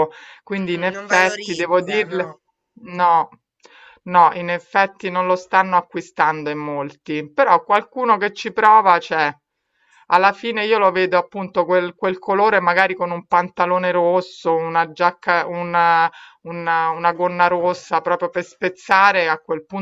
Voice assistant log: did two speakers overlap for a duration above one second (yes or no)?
yes